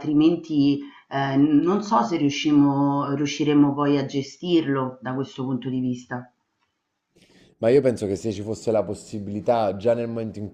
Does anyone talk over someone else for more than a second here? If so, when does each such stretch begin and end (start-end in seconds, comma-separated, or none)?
none